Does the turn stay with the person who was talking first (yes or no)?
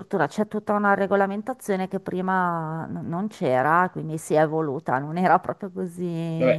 no